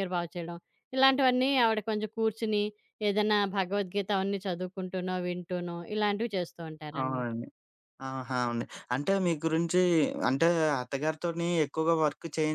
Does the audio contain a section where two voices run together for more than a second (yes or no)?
no